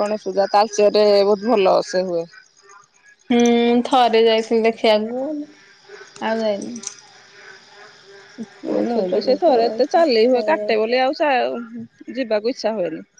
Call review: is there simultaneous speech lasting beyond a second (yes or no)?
yes